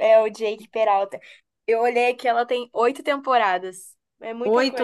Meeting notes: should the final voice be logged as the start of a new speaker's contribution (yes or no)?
yes